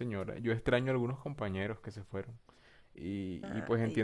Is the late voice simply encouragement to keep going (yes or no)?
yes